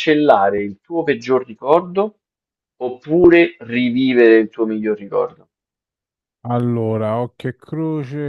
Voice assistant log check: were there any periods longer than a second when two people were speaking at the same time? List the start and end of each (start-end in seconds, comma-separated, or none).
none